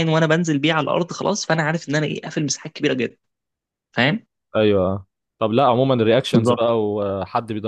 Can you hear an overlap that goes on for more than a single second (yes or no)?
no